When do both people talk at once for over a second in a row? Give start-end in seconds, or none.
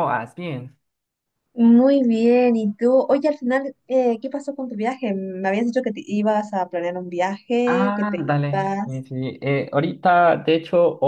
7.7-9.0